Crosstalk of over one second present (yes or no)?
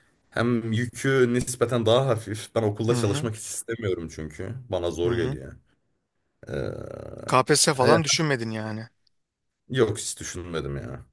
no